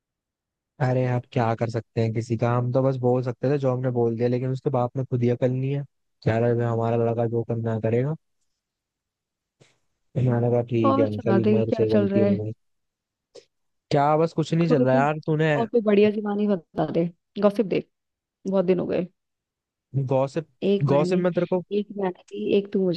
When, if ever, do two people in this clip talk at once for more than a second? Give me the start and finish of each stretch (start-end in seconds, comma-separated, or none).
10.8-12.4